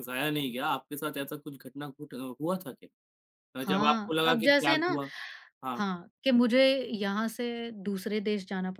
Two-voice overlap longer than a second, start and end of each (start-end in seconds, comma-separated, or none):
3.6-5.0